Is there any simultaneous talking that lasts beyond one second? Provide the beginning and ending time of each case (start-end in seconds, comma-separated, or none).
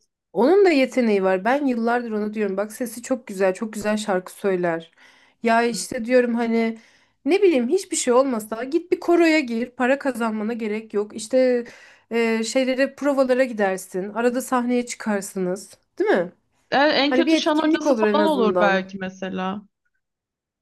17.1-18.8